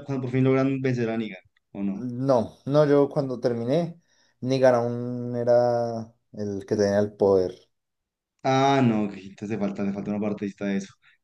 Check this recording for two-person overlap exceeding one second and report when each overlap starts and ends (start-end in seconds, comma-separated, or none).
none